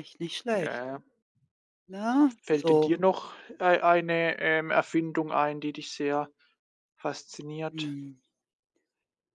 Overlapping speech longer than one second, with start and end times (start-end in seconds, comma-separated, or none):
none